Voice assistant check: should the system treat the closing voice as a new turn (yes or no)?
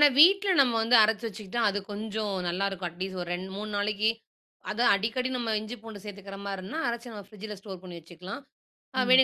no